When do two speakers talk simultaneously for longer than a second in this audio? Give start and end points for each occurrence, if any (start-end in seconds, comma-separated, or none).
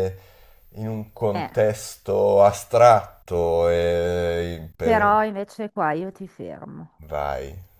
none